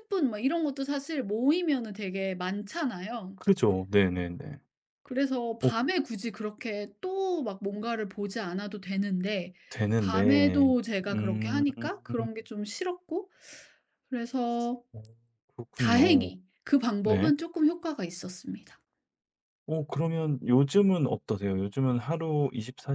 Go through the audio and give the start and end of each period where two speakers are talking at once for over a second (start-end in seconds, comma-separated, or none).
10.0-11.6